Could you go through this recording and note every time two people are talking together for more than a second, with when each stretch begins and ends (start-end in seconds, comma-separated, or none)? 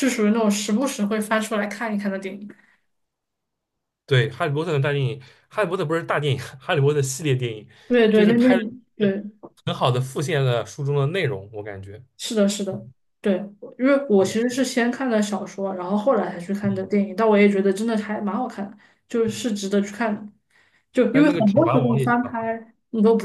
21.1-22.5